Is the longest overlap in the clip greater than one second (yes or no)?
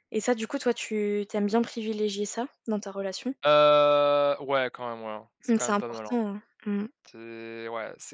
no